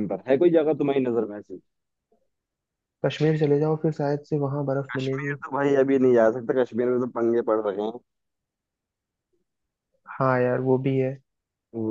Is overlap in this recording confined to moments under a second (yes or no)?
yes